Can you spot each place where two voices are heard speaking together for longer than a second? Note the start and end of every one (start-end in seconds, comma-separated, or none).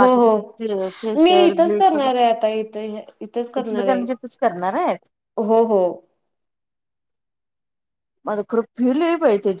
0.6-2.2